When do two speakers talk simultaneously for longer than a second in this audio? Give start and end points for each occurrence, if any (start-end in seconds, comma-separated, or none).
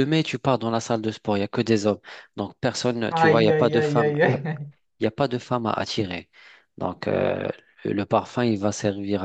3.1-4.6